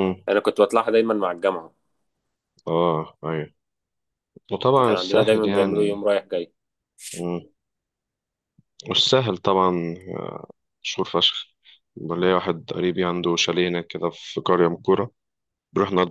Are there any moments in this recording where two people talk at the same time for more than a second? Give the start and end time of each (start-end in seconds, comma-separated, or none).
4.9-6.1